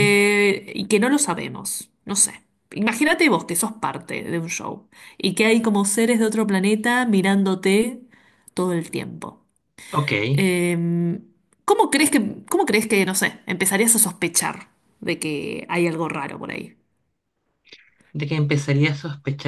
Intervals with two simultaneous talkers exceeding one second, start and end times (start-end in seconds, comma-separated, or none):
none